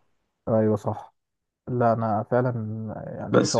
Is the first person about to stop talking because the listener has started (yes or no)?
yes